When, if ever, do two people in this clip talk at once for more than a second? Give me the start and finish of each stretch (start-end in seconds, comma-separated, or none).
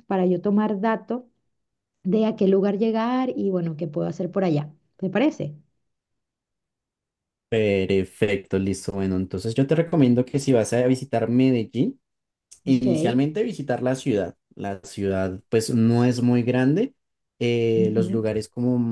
none